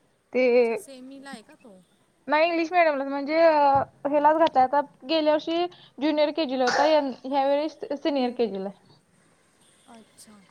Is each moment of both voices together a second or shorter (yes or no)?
yes